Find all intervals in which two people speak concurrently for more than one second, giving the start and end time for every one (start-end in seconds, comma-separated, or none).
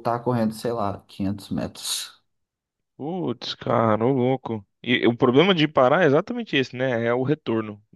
none